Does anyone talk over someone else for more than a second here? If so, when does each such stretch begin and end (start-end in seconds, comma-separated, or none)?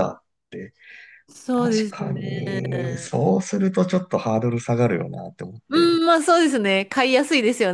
1.5-3.1